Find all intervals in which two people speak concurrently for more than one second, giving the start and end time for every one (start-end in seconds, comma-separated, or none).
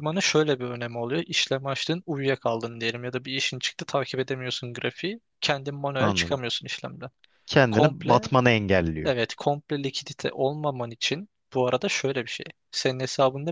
none